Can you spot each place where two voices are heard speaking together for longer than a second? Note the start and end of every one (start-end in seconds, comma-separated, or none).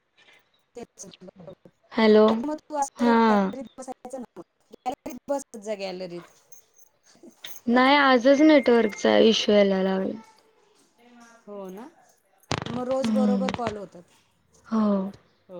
none